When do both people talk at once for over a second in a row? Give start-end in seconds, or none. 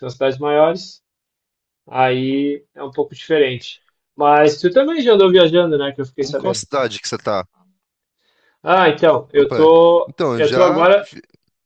9.3-11.1